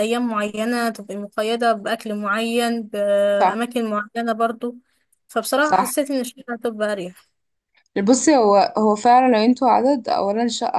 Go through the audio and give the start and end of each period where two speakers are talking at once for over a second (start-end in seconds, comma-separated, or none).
none